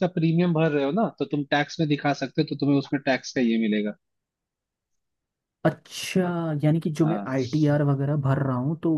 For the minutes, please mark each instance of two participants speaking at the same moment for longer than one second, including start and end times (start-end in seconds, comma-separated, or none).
none